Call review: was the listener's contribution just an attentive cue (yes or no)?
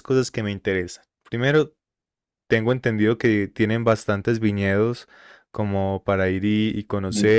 yes